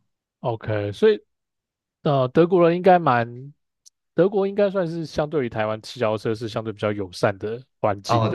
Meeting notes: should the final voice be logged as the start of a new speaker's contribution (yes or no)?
yes